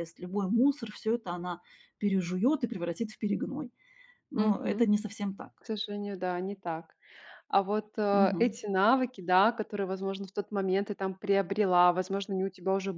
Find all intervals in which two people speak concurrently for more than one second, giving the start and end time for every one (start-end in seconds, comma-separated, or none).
none